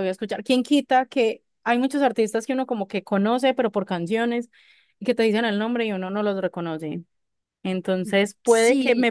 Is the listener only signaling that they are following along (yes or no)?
yes